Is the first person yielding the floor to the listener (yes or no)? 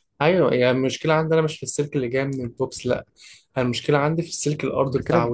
yes